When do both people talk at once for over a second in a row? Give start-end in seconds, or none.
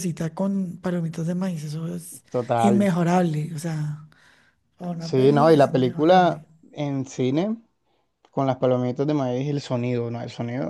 5.0-6.4